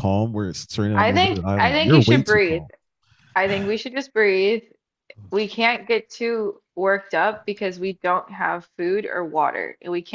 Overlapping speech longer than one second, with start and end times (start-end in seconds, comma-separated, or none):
0.9-2.6